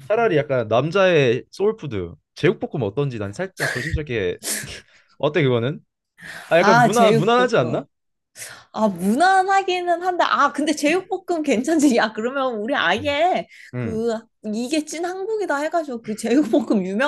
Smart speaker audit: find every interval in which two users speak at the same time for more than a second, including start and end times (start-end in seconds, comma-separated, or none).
6.6-7.8